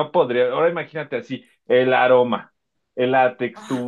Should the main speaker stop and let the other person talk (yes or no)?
no